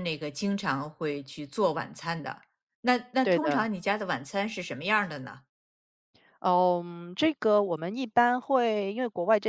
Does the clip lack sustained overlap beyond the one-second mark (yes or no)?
yes